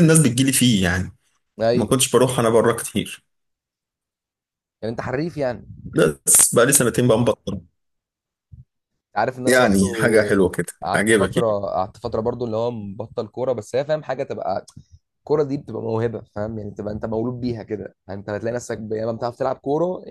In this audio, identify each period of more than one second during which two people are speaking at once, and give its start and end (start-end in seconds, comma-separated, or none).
9.5-11.5